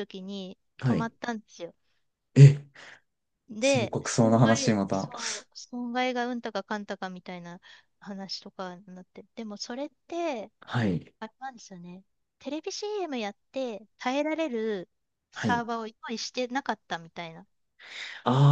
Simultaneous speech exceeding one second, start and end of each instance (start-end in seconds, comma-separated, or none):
3.6-5.1